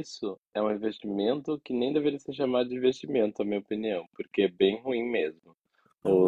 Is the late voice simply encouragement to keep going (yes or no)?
yes